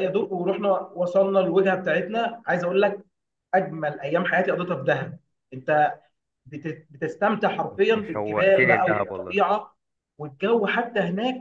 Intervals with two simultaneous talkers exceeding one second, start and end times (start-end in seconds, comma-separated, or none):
7.7-9.3